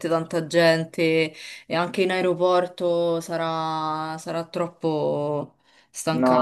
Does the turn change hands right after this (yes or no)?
yes